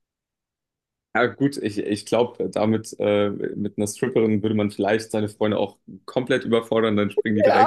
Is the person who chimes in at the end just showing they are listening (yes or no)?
no